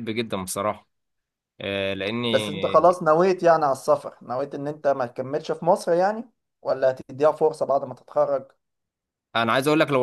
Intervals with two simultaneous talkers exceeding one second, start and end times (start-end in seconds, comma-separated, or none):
none